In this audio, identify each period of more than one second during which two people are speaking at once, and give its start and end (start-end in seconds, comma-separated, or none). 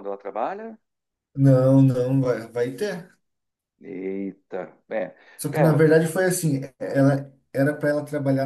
none